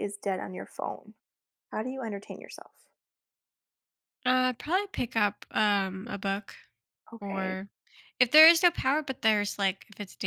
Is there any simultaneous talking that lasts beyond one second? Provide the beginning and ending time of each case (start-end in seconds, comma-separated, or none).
none